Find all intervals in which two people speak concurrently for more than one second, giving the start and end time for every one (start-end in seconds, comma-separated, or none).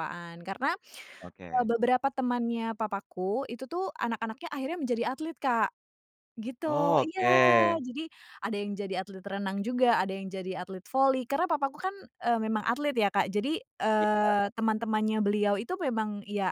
none